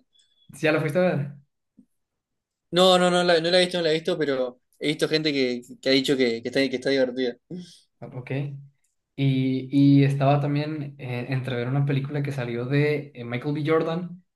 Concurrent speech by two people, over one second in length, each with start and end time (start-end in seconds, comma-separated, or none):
none